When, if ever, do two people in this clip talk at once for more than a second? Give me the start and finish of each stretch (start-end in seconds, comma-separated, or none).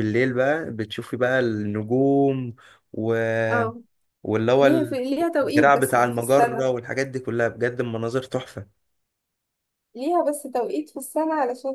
5.4-6.7